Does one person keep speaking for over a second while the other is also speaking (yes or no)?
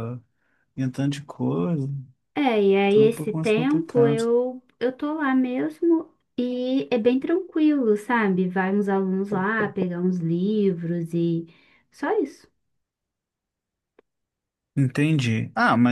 yes